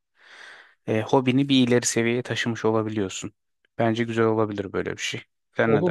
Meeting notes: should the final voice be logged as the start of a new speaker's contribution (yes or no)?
yes